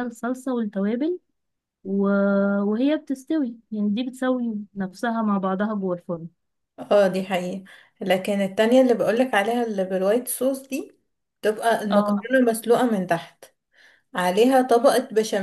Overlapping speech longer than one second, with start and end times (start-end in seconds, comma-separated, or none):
none